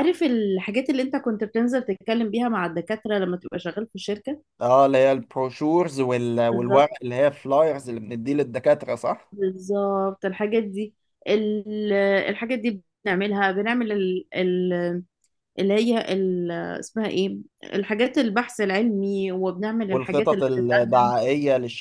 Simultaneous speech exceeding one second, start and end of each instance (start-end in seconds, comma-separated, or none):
19.9-21.1